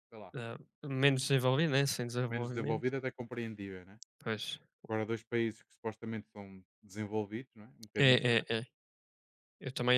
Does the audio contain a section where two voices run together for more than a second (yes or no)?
no